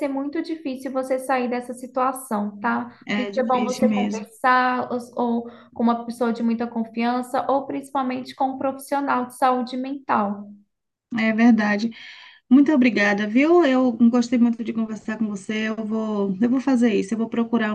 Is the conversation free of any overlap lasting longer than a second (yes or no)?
no